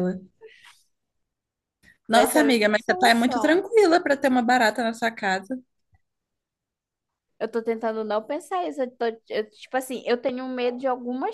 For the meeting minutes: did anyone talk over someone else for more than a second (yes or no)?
yes